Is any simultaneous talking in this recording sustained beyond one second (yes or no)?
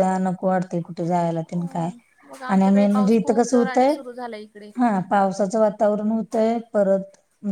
yes